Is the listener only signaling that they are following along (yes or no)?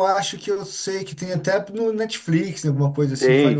no